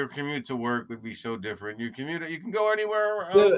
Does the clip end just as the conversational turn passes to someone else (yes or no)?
yes